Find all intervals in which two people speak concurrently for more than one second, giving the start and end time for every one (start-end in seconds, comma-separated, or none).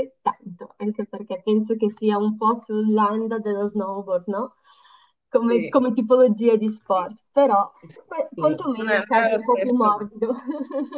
8.3-10.1